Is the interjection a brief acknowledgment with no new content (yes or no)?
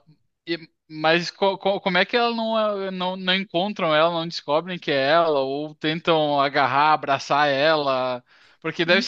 yes